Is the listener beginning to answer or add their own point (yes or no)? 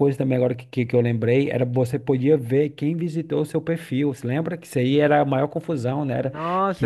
yes